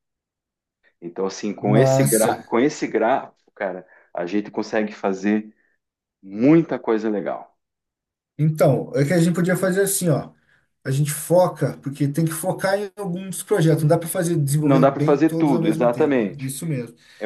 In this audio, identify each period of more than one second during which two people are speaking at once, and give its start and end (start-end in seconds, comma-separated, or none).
14.6-16.5